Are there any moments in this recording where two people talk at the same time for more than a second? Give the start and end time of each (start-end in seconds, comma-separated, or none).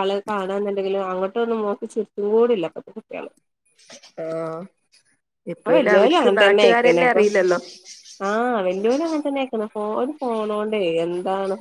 5.6-7.2